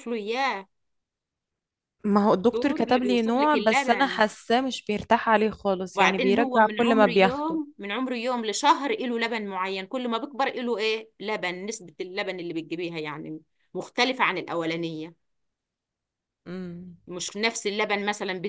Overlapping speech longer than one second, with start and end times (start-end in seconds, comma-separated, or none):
2.3-4.2, 6.0-7.6